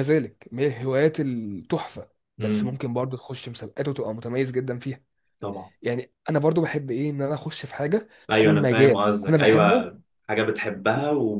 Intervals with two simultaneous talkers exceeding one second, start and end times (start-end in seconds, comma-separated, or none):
8.3-9.9